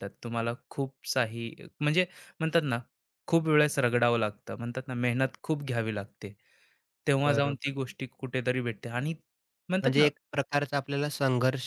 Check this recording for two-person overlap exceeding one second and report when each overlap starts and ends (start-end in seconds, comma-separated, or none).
none